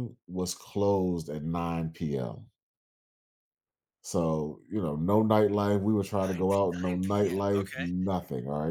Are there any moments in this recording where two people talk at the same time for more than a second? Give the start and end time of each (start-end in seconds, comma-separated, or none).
6.2-7.9